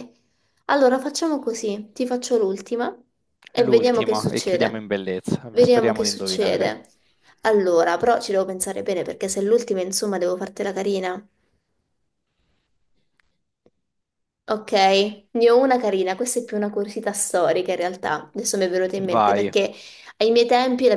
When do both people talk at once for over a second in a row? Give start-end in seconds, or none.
3.5-4.8, 5.5-6.7